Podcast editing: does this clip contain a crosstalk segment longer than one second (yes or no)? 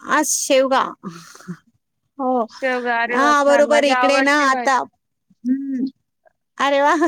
yes